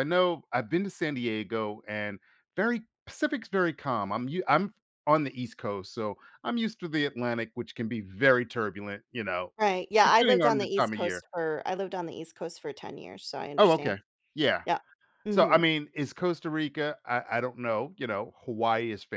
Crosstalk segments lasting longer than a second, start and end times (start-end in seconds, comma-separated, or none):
10.0-11.2